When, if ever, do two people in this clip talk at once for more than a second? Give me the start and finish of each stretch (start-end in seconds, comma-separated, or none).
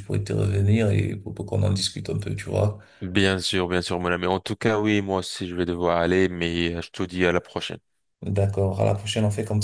none